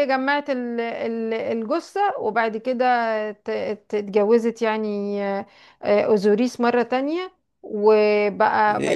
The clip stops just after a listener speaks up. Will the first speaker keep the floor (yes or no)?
no